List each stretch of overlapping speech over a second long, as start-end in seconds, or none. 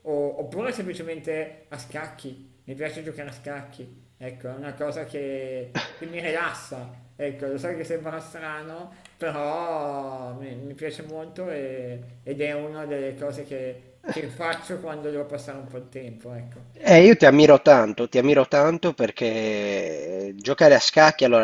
none